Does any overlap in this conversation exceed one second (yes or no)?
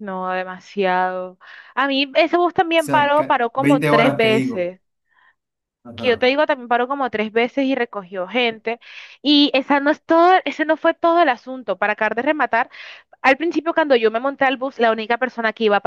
yes